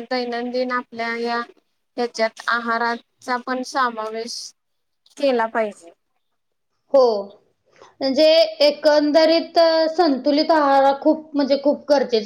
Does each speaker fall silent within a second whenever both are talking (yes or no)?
yes